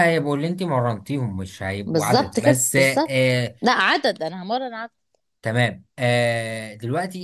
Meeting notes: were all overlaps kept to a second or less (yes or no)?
no